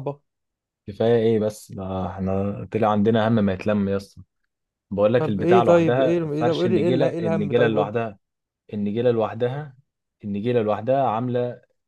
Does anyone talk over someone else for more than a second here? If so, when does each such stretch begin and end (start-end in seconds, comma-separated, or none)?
5.2-7.9